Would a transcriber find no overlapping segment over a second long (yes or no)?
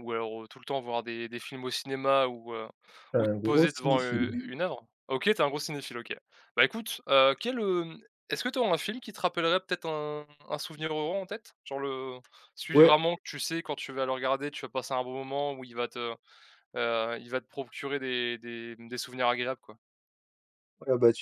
no